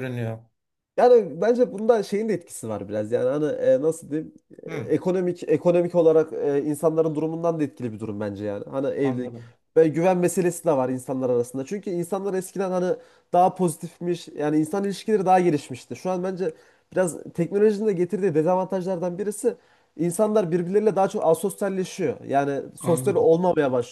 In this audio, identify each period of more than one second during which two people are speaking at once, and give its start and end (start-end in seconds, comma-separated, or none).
none